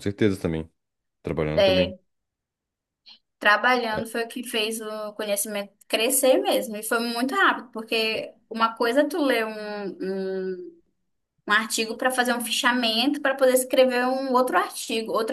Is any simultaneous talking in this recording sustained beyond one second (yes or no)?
no